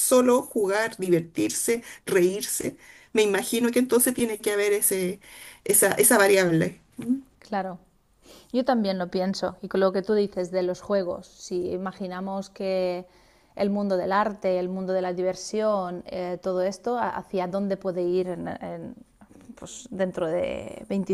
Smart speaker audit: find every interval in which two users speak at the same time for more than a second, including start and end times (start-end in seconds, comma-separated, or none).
none